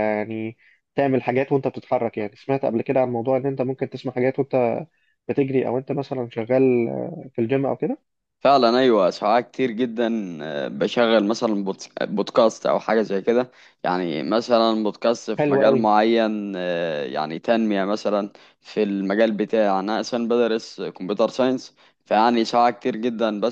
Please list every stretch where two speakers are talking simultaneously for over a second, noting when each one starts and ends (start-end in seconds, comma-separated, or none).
none